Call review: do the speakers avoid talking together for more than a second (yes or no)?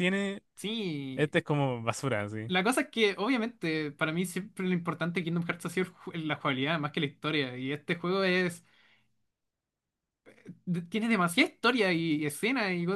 yes